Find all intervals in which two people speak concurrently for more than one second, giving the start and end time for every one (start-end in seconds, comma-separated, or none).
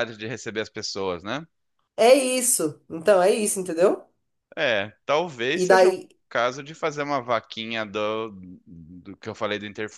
none